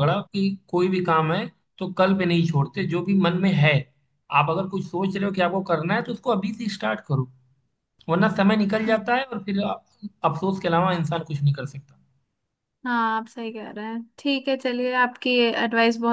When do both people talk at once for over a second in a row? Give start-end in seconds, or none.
none